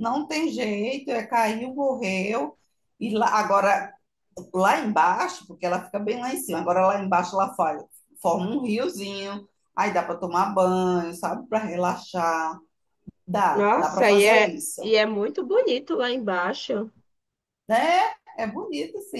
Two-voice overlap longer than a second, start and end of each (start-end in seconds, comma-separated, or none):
13.5-15.0